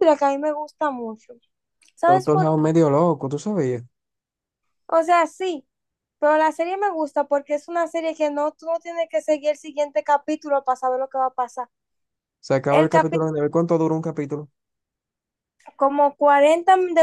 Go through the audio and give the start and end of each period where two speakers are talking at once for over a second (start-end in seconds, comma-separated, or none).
none